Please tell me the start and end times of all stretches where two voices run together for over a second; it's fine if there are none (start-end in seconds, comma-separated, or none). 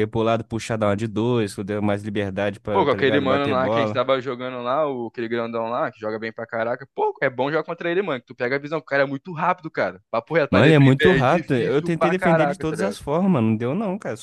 2.7-4.0, 10.5-13.0